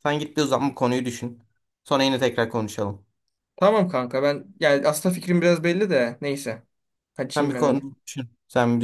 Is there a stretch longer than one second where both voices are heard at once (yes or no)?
no